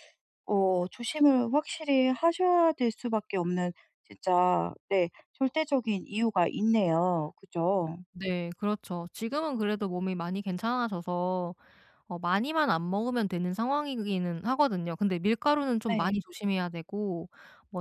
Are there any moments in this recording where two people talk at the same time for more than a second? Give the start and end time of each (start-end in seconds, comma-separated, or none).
none